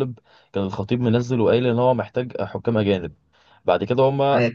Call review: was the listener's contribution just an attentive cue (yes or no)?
yes